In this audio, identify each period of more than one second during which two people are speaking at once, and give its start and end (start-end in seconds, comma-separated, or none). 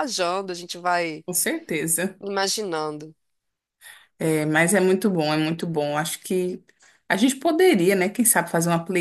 none